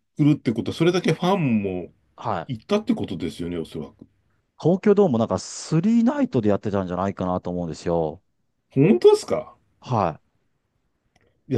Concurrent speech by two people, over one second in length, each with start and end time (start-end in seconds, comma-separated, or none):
none